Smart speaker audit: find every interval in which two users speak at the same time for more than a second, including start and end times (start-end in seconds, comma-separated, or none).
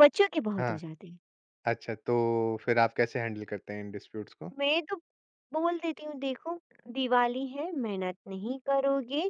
none